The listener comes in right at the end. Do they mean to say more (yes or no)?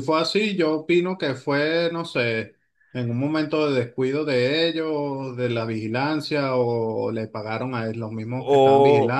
yes